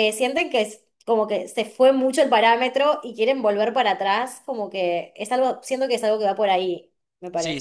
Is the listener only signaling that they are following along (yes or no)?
no